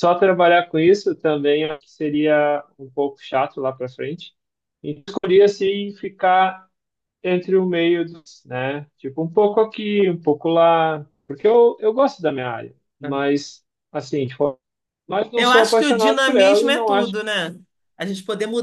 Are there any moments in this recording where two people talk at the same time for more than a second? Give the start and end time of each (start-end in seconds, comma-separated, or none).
15.3-17.1